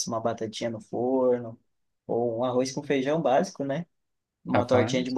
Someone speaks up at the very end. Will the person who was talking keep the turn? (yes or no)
yes